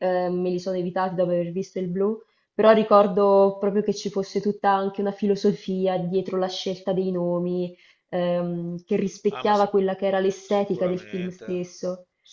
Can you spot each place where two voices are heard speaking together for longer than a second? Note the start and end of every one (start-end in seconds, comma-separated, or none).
10.4-11.7